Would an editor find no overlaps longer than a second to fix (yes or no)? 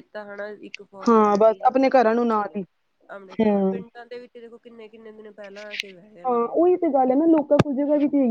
no